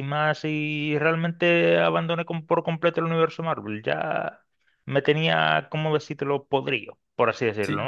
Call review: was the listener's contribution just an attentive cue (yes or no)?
no